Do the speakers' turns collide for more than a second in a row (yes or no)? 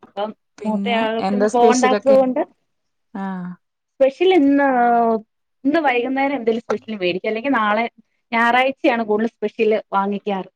yes